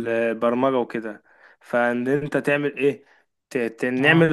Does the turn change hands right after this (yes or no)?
no